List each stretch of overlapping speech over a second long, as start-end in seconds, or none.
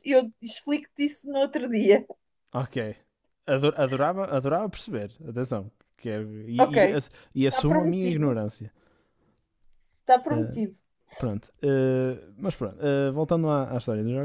6.6-8.4